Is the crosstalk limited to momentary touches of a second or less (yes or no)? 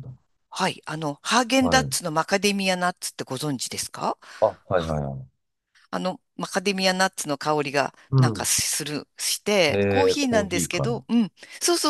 no